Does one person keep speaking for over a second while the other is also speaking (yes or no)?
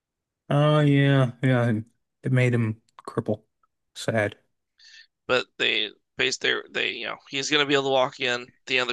no